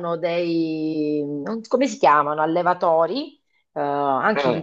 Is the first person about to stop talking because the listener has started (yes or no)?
no